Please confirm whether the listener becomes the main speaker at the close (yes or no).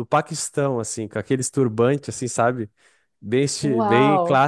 no